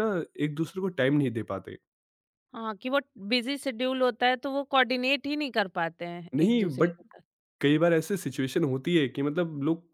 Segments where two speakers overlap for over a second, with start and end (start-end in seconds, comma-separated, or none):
none